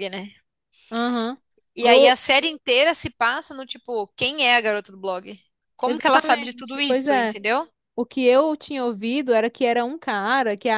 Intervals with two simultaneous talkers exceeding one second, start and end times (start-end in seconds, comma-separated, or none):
5.8-7.3